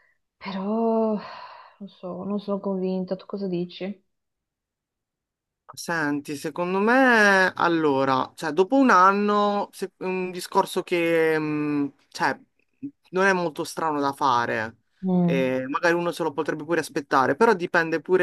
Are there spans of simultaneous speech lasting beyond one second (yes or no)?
no